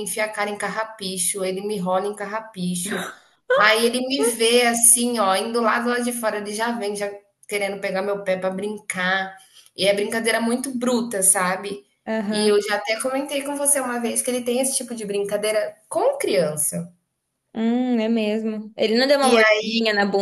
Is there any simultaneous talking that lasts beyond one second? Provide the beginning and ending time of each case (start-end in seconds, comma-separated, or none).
none